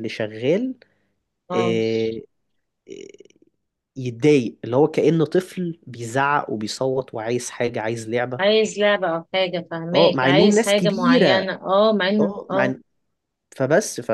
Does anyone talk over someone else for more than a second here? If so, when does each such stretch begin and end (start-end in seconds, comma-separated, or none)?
9.9-11.4